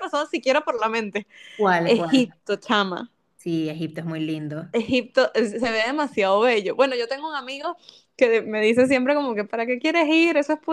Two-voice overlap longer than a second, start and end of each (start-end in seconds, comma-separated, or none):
none